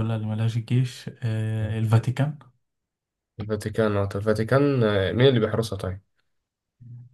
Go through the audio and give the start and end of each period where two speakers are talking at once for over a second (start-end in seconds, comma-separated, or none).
none